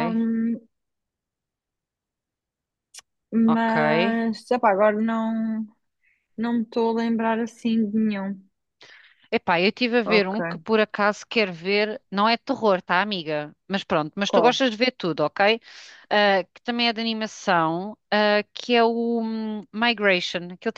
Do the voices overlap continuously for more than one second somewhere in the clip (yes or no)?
no